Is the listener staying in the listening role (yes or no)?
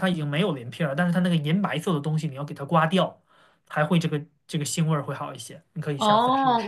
no